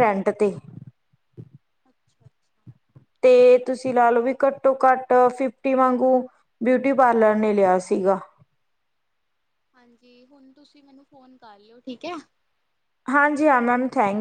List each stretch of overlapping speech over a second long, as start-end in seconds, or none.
none